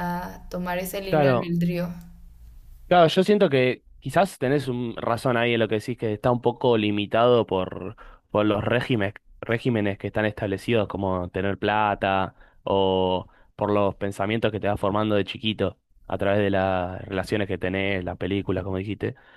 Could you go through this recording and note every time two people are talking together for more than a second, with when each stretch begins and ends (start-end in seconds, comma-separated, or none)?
none